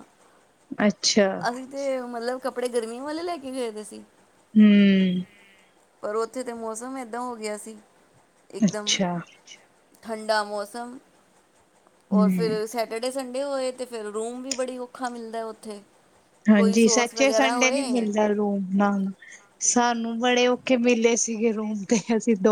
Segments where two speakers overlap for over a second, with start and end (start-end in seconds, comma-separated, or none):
16.5-18.1